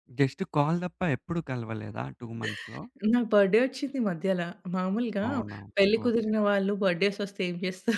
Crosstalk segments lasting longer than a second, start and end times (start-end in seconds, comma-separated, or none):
none